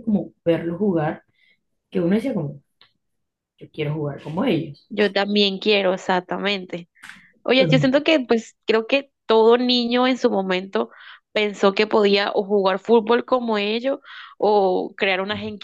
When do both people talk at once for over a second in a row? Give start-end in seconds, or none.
none